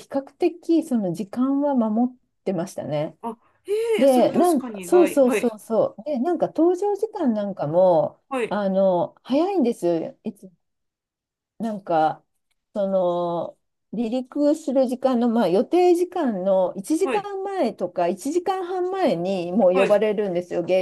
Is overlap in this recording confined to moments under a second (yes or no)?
no